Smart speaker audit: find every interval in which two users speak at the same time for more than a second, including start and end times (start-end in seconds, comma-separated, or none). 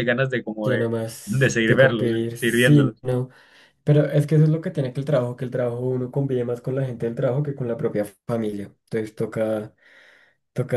0.6-3.0